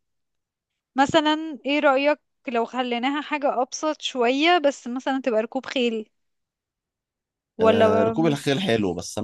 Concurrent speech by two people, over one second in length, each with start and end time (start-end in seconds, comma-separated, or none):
none